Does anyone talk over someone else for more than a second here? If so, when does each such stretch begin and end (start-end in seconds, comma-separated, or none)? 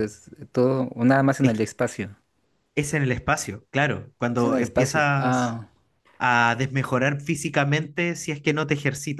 4.3-5.6